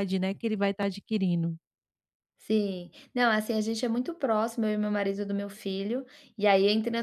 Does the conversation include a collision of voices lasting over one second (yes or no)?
no